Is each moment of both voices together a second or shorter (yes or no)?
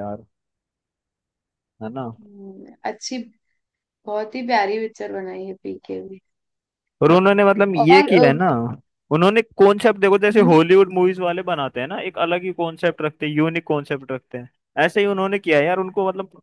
yes